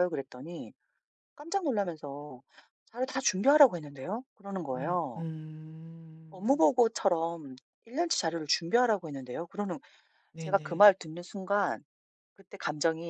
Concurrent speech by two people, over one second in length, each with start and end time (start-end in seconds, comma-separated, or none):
none